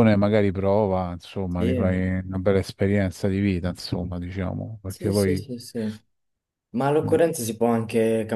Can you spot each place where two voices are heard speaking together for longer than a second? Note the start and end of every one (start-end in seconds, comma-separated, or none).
none